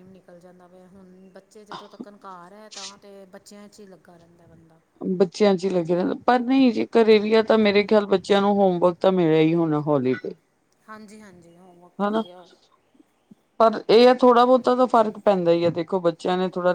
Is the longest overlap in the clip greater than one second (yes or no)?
no